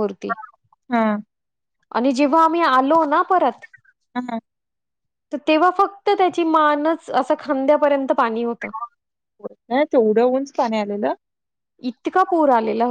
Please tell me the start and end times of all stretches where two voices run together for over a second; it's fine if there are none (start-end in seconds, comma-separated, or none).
none